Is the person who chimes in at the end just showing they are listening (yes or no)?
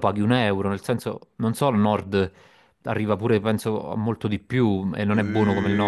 no